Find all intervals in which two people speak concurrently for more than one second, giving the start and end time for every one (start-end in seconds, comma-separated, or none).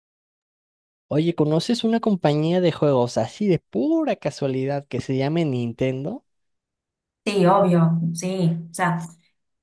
none